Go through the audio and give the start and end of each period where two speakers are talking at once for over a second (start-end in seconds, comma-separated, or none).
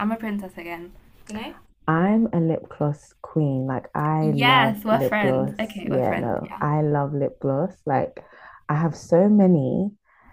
4.2-6.6